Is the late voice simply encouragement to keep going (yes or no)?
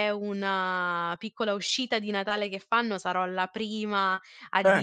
yes